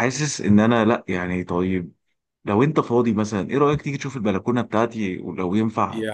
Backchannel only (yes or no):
no